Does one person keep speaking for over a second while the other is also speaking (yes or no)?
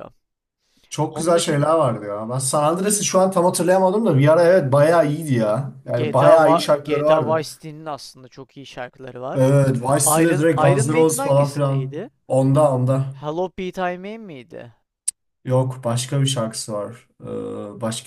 yes